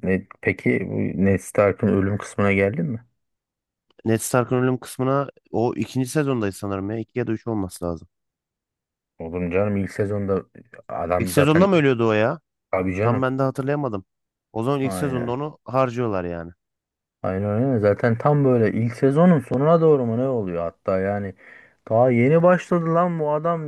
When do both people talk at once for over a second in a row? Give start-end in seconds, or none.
none